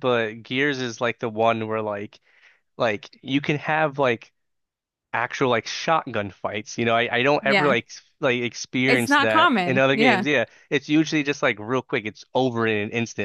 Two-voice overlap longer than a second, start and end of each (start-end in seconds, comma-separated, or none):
8.9-10.3